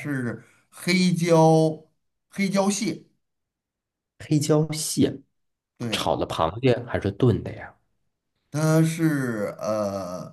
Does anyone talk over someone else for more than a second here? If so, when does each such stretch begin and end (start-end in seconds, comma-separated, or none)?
none